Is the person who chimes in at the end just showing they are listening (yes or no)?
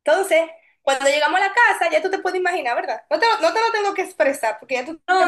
no